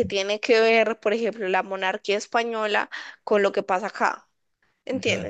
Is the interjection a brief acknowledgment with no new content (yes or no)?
no